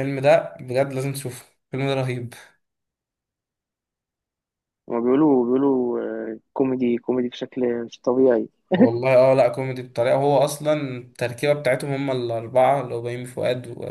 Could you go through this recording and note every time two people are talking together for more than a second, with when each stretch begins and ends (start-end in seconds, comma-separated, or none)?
none